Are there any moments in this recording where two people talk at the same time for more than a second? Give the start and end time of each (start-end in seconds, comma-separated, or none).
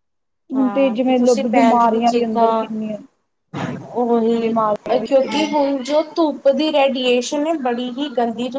0.6-2.7